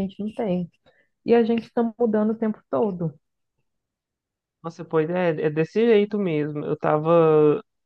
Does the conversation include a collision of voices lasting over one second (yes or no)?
no